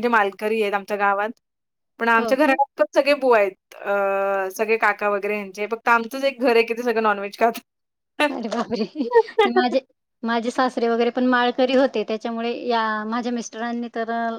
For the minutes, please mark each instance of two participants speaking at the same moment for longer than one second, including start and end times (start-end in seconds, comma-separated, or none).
none